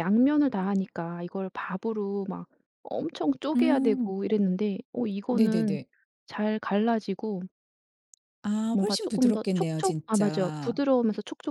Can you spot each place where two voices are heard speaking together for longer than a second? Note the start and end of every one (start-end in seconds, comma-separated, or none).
8.7-10.8